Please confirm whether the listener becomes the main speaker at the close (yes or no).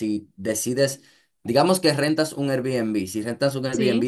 no